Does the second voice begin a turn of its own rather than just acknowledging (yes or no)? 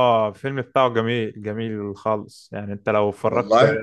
no